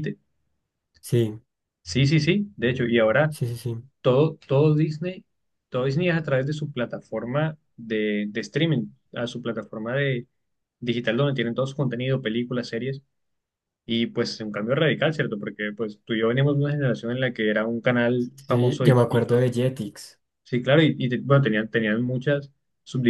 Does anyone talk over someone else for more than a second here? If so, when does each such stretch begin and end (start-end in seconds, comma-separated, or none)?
none